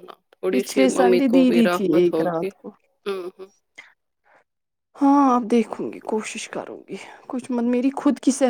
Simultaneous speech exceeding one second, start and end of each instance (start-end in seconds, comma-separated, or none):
0.6-2.5